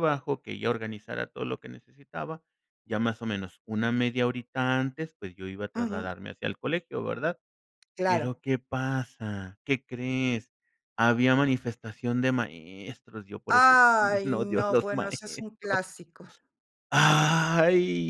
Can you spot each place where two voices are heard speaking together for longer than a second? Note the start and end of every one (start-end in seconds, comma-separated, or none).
13.5-15.8